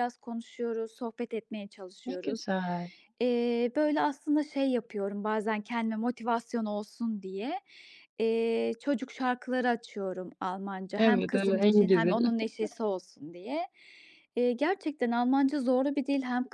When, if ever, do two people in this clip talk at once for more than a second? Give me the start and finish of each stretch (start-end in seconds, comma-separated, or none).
11.0-12.2